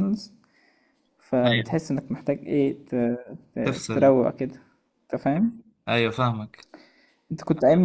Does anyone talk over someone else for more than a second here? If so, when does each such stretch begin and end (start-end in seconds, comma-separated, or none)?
none